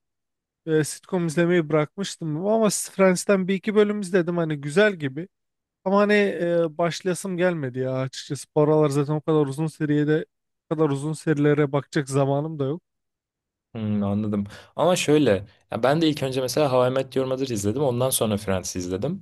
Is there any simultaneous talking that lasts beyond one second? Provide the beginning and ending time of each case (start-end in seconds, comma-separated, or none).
none